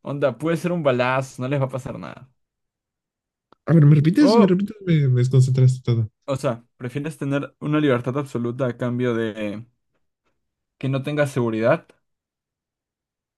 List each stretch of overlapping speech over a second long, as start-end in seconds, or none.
none